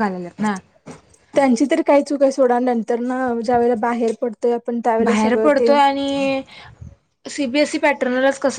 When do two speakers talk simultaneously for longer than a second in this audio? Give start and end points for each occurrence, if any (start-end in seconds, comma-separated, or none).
none